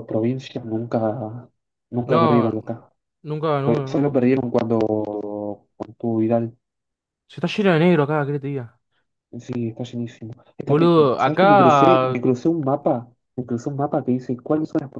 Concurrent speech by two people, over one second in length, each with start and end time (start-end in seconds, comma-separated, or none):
10.7-12.2